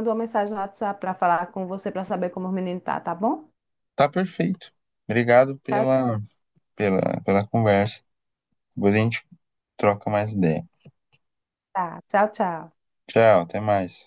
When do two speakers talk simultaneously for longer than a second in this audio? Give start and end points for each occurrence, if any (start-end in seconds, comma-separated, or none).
none